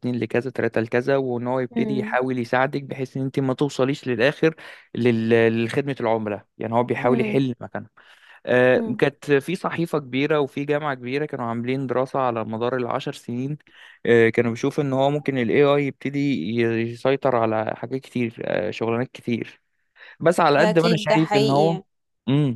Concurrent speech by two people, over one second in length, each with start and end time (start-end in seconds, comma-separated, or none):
20.6-21.8